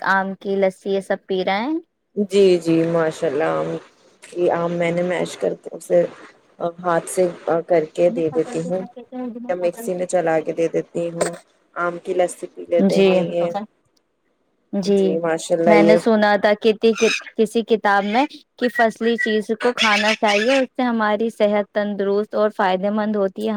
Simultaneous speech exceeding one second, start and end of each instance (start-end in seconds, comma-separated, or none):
none